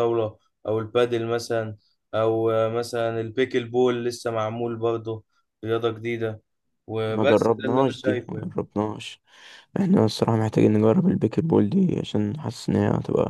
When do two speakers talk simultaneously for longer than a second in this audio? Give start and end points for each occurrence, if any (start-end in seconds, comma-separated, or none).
7.1-8.5